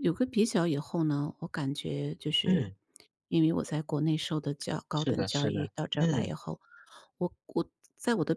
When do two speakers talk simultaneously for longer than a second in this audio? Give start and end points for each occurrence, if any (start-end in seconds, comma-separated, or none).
4.9-6.3